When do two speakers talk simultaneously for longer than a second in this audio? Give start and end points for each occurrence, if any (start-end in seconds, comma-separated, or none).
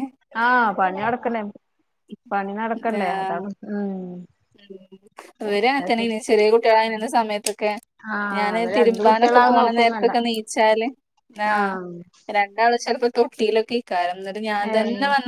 8.4-10.1